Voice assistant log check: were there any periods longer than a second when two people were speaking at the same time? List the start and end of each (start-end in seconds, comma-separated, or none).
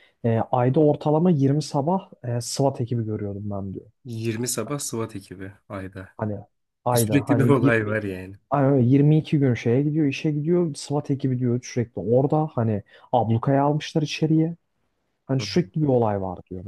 6.9-8.3